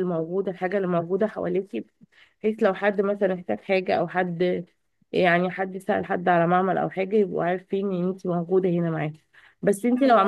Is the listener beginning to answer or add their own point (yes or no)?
no